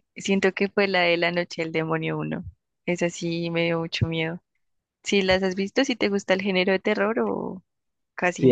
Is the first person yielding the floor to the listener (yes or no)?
yes